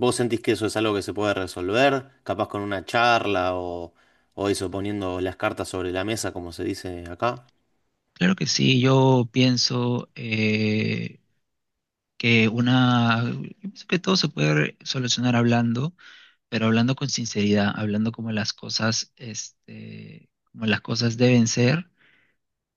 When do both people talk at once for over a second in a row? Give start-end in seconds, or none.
none